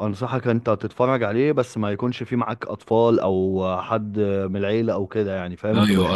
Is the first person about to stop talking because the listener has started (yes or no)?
yes